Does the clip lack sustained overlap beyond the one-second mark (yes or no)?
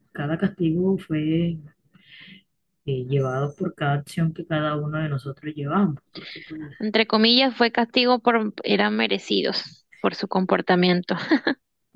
yes